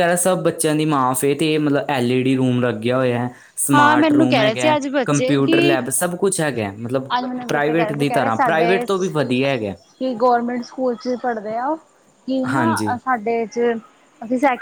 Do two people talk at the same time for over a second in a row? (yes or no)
yes